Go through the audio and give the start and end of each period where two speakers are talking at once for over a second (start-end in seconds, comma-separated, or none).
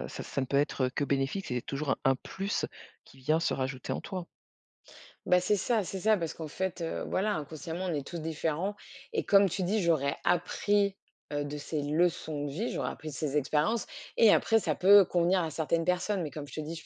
none